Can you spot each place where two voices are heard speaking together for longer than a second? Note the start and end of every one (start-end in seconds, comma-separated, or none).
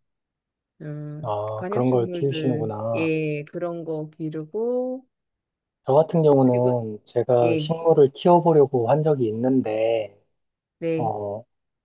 1.2-3.1